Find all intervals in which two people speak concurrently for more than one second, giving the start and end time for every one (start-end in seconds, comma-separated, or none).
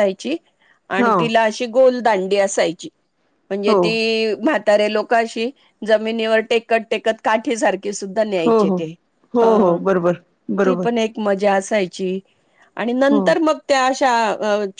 none